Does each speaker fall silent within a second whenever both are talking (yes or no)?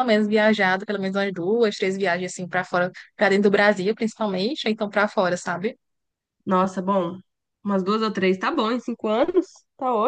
yes